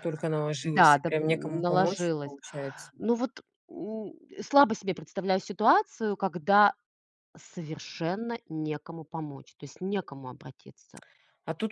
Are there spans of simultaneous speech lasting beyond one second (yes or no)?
yes